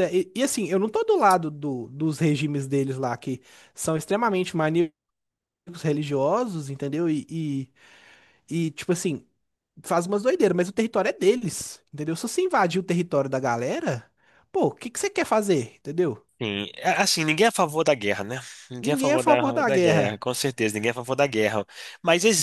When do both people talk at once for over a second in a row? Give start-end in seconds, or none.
18.8-20.2